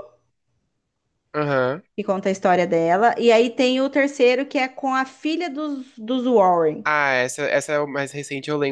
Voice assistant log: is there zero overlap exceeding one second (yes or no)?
yes